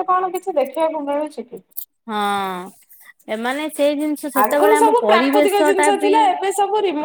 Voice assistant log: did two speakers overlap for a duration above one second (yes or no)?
yes